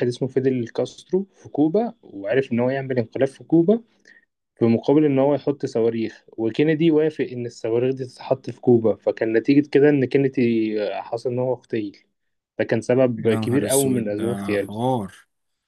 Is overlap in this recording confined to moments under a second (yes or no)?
no